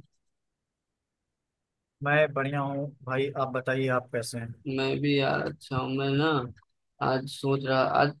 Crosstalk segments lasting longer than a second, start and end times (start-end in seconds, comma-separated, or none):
none